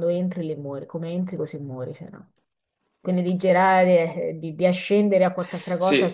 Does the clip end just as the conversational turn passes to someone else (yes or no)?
yes